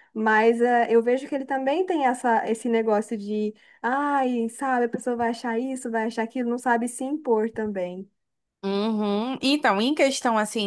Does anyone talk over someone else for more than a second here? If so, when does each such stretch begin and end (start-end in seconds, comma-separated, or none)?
none